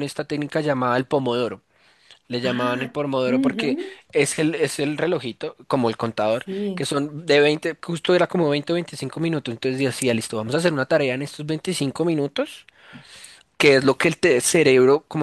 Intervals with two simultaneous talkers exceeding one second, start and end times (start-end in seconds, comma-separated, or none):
2.4-4.0